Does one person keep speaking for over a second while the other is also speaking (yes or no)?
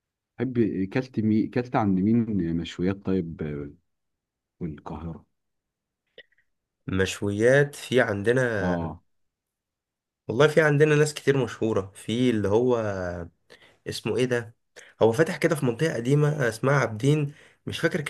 no